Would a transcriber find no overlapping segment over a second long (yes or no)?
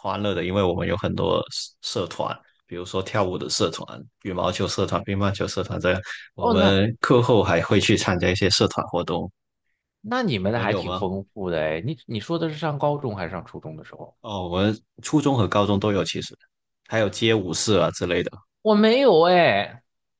yes